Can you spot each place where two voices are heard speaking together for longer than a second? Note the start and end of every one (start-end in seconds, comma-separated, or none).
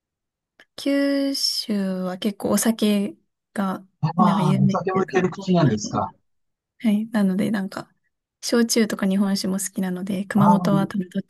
4.0-5.9